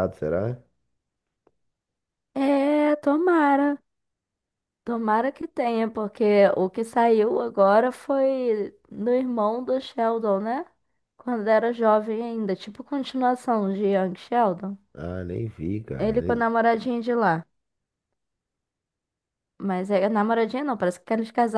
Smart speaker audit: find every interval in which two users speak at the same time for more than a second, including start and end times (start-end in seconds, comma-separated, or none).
none